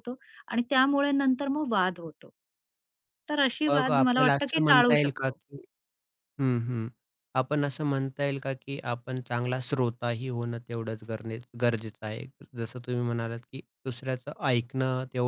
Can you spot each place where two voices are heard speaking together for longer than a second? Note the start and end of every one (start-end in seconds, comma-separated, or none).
3.7-5.4